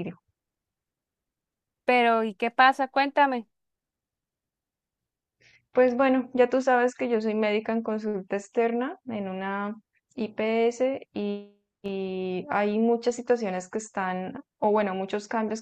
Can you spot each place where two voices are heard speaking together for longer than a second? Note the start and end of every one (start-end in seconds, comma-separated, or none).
none